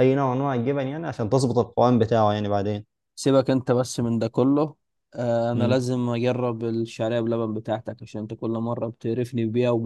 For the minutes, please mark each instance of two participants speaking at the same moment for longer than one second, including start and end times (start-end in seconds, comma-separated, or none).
none